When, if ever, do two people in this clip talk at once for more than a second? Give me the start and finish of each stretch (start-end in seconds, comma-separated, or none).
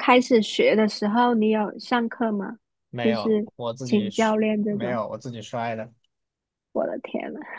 3.0-5.0